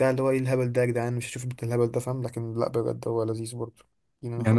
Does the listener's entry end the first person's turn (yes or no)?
yes